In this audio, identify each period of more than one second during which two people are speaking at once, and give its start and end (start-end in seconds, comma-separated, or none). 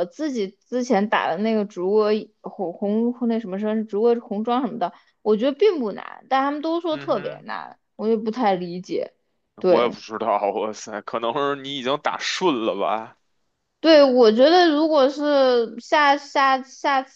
none